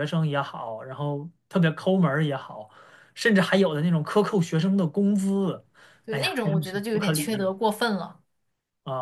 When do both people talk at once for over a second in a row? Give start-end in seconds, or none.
6.1-7.5